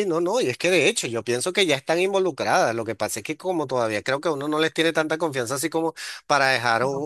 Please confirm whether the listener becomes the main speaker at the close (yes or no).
no